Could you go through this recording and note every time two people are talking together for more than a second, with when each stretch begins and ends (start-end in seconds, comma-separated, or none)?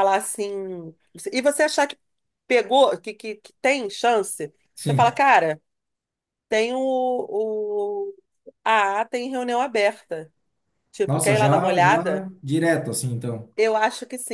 11.1-12.3